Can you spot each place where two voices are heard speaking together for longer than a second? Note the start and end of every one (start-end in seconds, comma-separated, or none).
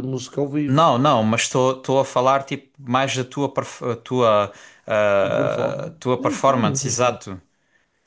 5.2-7.2